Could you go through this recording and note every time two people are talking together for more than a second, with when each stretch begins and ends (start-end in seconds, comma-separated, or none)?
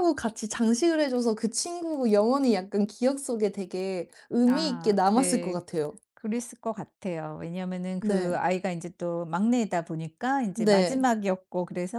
4.5-5.8